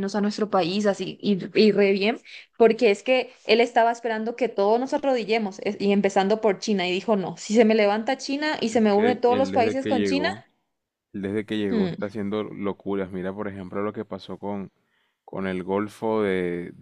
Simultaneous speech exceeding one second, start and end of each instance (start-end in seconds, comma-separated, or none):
8.9-10.3